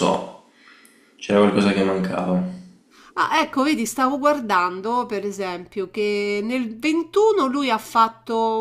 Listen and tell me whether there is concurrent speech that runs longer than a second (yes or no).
no